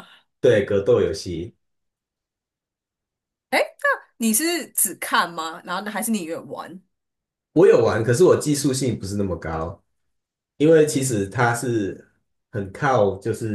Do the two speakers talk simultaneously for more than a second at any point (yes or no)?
no